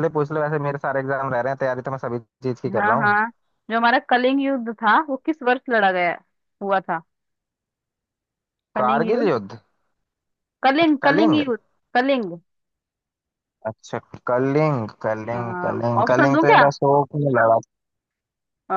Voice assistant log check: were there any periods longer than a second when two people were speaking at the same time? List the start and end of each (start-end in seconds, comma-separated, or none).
15.3-16.6